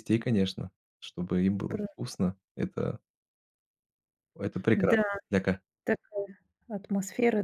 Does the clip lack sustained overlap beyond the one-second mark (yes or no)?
yes